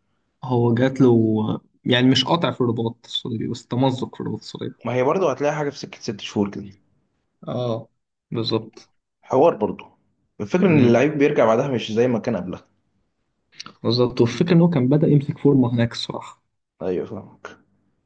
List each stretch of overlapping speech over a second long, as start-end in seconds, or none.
none